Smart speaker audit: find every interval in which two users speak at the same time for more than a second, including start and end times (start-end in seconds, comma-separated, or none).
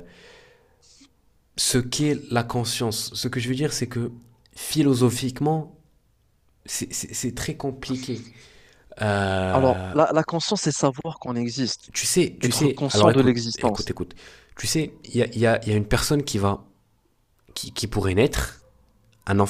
12.4-13.9